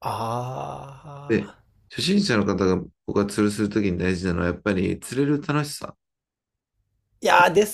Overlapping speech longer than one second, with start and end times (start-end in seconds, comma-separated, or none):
none